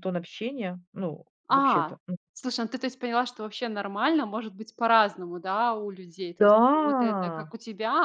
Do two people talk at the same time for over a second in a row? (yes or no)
no